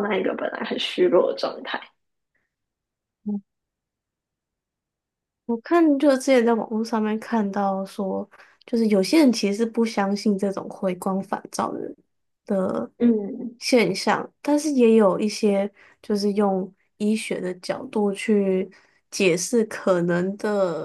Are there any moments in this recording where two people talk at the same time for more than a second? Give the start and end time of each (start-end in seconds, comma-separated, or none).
none